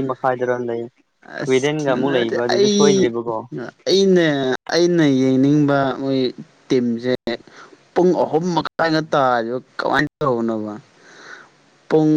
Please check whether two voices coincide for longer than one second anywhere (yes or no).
yes